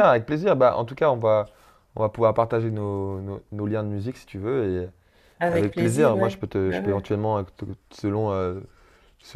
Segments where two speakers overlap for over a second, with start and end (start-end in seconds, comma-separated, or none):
5.5-7.1